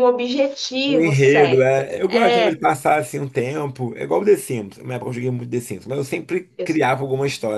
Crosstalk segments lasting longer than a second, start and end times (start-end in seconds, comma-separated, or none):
0.8-2.6